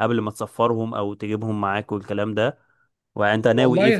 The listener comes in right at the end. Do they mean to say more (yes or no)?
yes